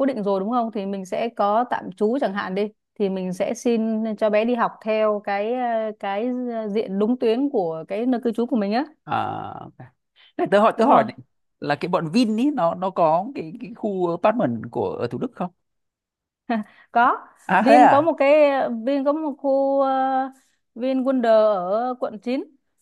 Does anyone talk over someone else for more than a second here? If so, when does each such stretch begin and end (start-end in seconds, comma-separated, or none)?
none